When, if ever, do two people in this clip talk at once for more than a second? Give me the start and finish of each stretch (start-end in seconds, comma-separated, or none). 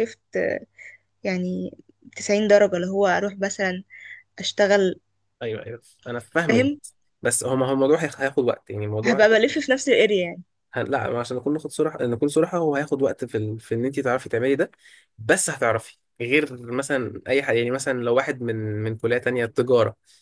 none